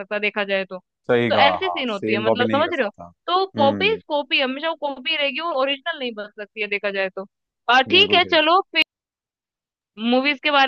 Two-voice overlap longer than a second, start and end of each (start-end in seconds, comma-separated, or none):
1.3-2.9